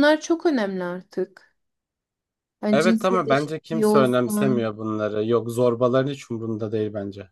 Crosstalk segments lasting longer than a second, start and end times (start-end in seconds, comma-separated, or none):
2.7-4.7